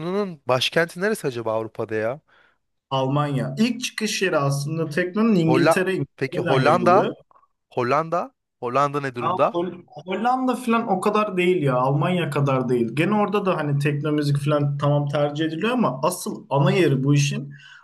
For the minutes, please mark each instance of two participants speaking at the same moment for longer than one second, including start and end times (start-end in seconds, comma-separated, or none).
5.5-7.1